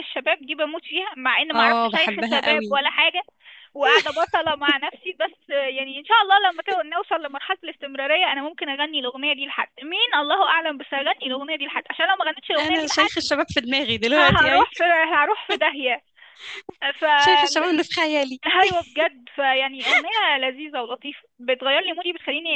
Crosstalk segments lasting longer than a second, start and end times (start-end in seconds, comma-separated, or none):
1.5-2.8